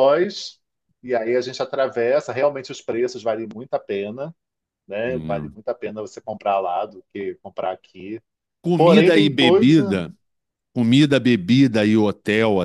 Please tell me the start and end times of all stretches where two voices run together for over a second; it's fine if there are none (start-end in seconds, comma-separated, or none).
8.8-10.0